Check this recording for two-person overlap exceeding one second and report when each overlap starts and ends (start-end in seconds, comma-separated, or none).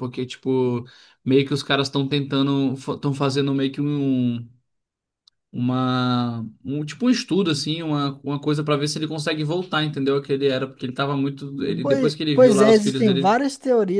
11.8-13.4